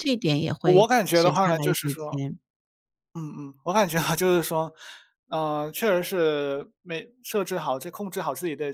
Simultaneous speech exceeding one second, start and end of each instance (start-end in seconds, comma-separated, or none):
0.6-2.2